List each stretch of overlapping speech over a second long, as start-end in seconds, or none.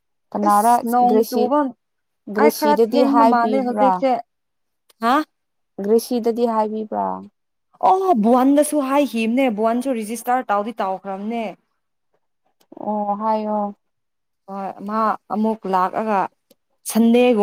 2.4-4.0